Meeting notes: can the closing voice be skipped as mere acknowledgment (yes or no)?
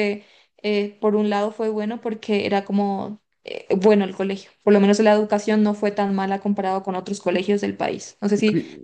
no